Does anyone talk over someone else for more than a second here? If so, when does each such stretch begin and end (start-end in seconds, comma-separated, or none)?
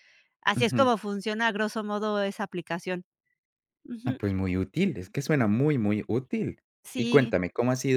none